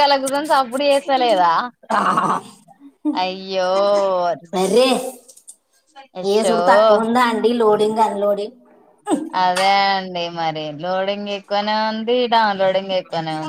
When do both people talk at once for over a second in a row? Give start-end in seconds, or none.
none